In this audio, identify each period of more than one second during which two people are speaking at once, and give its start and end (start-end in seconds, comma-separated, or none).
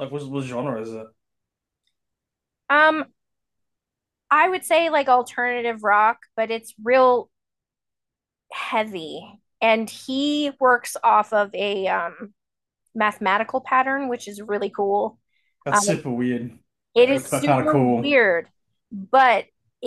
16.9-18.2